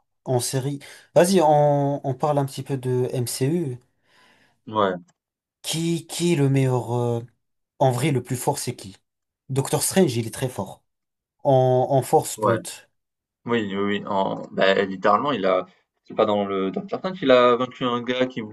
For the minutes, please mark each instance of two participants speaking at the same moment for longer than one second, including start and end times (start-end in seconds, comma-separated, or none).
none